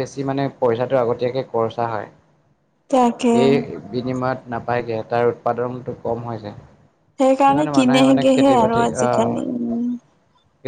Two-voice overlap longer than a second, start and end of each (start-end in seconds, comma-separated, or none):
7.2-9.9